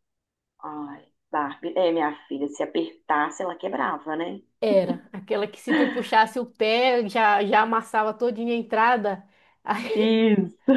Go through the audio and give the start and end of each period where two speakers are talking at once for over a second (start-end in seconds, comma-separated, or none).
none